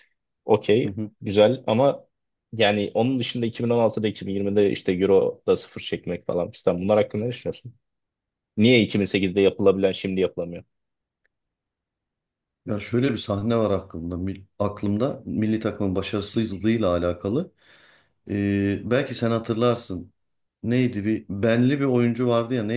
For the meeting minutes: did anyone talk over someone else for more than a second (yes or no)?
no